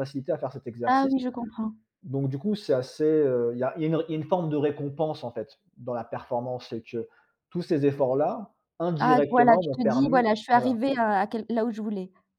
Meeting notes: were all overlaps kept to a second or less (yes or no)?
no